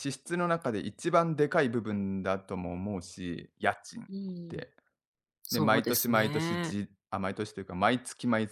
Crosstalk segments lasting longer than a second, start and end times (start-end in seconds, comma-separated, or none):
5.5-6.8